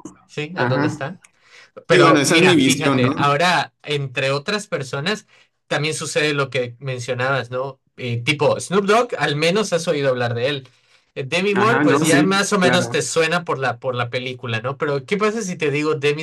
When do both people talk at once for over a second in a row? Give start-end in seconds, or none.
1.9-3.2, 11.6-13.0